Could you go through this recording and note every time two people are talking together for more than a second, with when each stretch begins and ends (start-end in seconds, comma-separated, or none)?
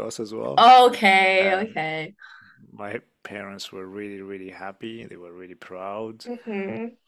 none